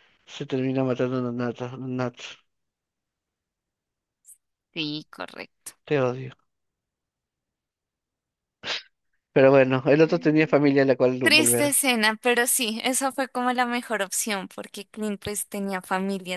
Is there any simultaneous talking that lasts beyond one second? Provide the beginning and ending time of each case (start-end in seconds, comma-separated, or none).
none